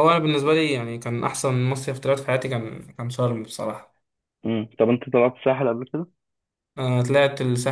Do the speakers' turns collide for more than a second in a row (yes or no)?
no